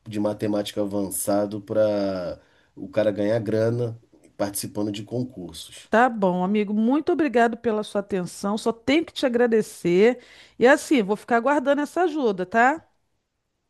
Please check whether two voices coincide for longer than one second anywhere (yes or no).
no